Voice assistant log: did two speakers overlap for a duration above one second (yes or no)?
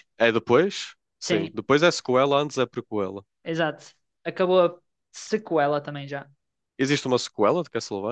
no